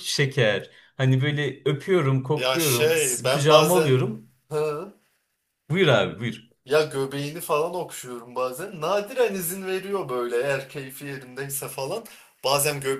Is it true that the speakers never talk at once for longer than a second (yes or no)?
no